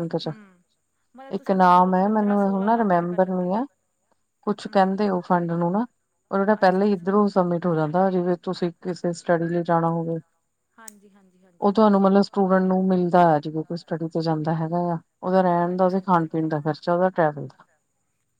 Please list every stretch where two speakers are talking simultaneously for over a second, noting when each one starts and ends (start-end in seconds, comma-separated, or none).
1.4-3.6